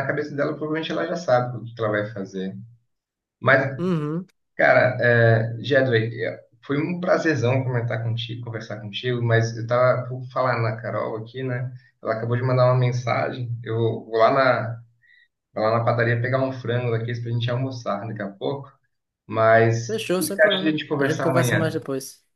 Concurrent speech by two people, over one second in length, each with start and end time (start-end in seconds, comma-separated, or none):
19.9-21.8